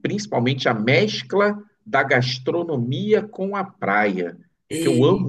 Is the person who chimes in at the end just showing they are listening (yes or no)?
yes